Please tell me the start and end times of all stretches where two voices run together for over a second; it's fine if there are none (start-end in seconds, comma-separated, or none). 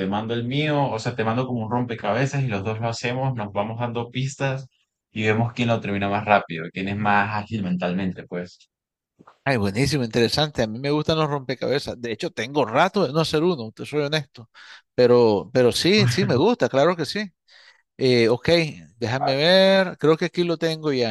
none